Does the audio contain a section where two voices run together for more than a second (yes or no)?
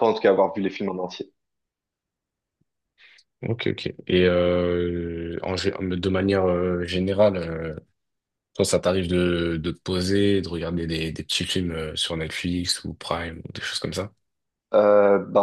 no